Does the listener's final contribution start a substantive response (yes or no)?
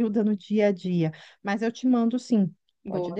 yes